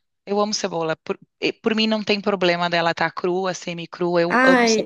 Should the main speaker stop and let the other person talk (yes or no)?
yes